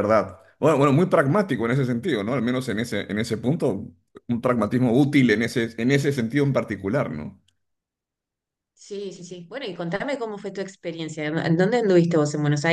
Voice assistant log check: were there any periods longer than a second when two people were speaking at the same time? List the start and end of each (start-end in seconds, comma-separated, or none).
none